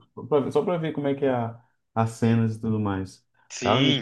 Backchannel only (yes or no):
no